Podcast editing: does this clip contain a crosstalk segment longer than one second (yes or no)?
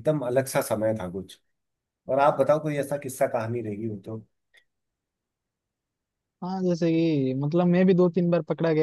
no